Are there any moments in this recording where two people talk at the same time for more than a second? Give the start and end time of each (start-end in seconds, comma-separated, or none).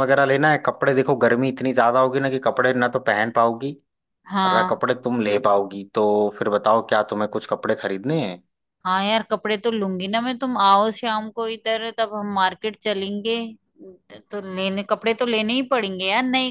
none